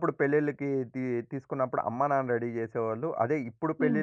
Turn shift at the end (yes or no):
no